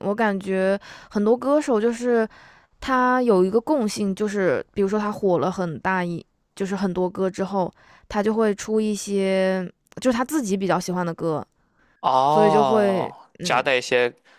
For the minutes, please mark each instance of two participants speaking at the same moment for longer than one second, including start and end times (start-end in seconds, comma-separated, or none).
12.2-13.7